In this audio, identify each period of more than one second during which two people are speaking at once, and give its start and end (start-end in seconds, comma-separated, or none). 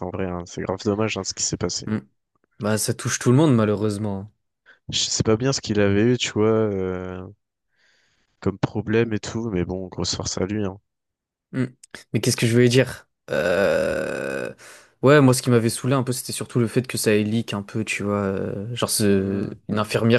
none